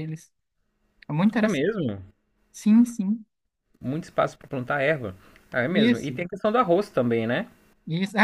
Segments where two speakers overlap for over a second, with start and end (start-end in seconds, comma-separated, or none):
none